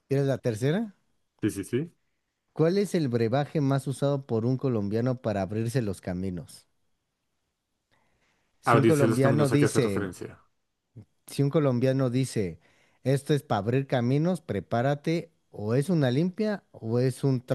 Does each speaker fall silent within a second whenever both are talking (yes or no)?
no